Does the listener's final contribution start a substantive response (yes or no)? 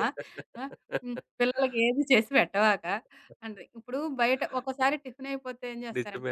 no